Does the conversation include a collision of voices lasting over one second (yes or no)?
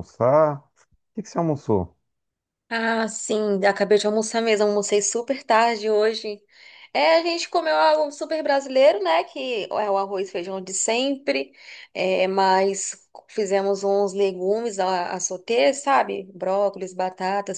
no